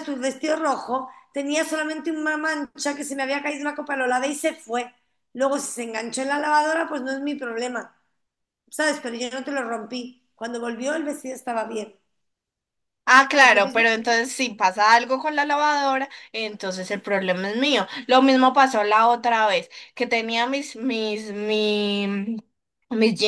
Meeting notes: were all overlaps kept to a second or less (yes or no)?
yes